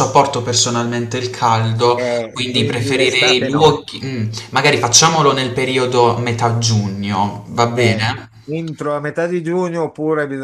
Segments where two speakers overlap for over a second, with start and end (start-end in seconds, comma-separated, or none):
1.9-3.9